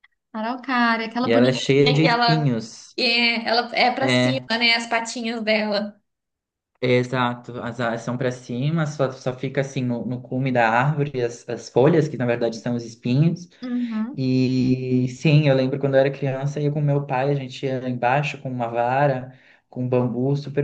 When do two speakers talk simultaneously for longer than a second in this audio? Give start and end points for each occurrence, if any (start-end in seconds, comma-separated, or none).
1.2-2.5